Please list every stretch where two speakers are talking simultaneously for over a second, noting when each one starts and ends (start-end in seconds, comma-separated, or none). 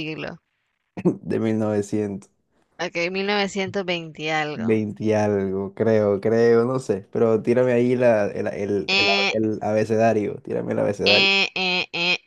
none